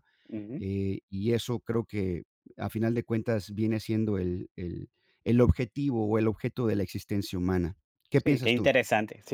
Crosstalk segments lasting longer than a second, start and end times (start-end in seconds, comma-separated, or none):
none